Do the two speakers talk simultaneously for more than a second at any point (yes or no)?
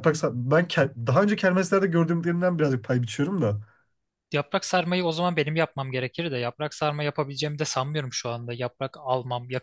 no